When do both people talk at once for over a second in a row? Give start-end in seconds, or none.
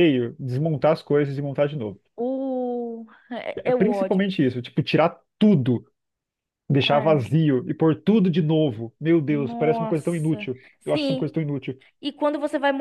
9.2-11.2